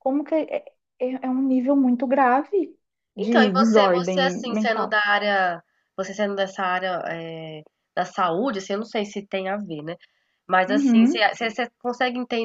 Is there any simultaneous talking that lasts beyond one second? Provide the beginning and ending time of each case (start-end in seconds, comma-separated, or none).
3.2-5.0